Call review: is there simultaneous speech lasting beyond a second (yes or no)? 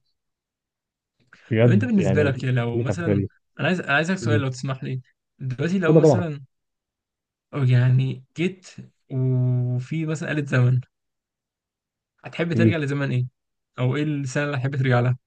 yes